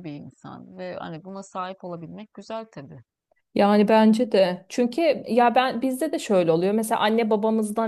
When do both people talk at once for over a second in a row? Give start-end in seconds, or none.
none